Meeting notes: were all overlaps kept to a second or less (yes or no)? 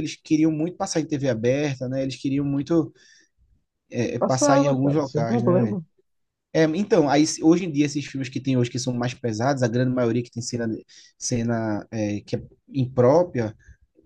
no